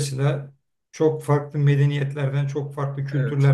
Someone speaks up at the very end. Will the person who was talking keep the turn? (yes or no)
yes